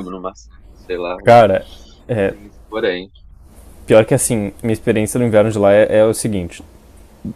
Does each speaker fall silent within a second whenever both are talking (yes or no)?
yes